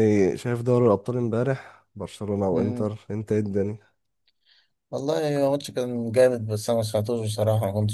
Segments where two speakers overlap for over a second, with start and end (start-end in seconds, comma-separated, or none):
none